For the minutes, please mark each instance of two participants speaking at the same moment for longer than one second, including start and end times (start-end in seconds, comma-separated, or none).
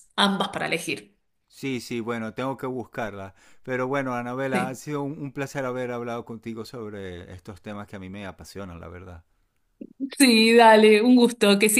none